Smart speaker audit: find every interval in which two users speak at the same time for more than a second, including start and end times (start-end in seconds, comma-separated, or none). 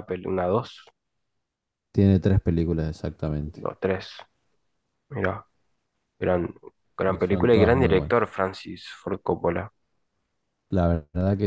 7.0-8.2